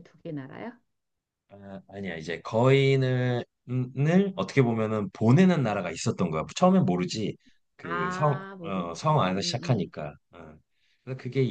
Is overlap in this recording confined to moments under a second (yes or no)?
no